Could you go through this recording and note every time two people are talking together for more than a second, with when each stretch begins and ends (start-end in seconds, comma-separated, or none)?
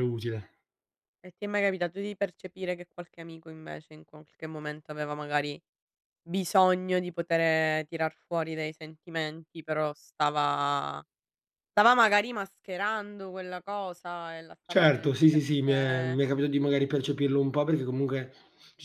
14.7-16.2